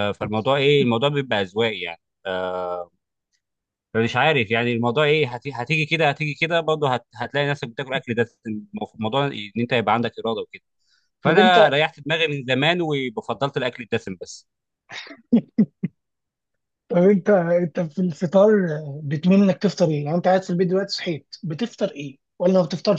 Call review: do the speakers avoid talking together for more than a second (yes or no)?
yes